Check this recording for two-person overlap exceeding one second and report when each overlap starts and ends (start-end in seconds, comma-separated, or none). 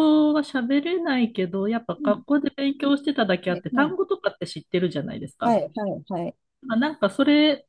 none